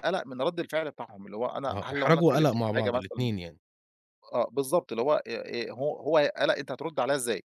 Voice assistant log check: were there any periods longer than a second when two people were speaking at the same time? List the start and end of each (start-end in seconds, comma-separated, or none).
1.7-3.3